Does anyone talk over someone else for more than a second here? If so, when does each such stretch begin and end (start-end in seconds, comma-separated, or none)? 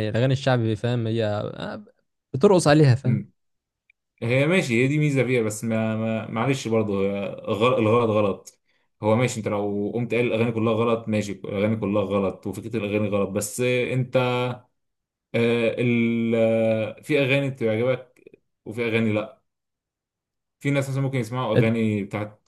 none